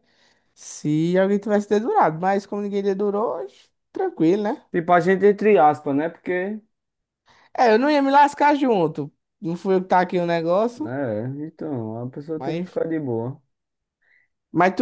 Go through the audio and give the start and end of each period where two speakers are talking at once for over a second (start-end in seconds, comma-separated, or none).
none